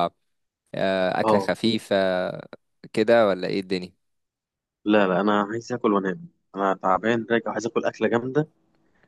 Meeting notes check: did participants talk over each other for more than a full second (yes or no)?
no